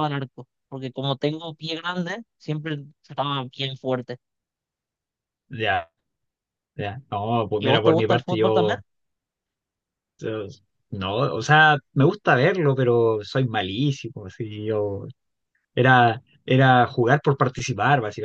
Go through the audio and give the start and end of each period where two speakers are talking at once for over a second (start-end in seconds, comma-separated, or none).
7.6-8.8